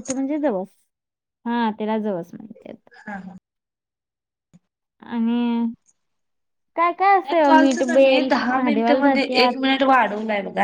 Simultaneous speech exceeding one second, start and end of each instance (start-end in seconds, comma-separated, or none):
7.3-9.5